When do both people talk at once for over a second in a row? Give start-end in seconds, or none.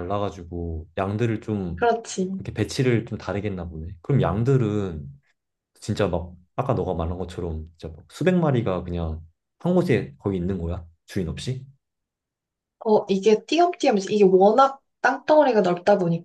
none